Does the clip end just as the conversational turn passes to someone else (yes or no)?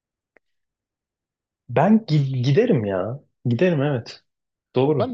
yes